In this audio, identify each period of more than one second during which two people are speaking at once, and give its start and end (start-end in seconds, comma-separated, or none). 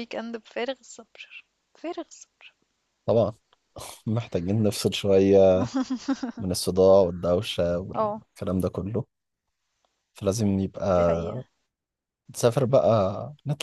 none